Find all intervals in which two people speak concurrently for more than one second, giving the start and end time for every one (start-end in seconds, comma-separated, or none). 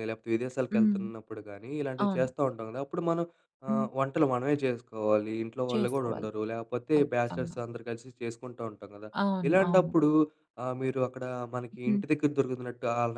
none